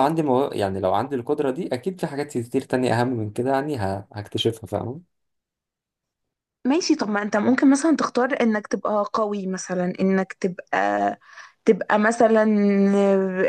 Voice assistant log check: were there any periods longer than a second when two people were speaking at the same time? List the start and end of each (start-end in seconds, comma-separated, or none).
none